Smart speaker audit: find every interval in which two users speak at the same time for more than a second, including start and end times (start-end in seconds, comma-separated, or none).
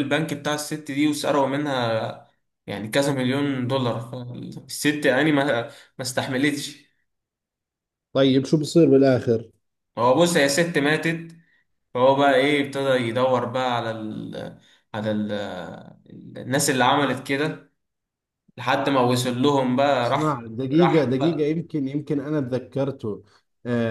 20.0-21.6